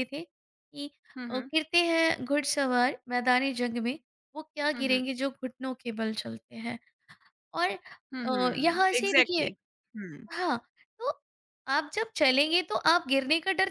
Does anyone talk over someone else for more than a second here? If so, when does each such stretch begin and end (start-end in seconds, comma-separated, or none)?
8.2-9.4